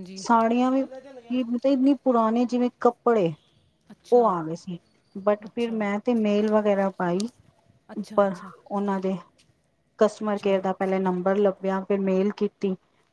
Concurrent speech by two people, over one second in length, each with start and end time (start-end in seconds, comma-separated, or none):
none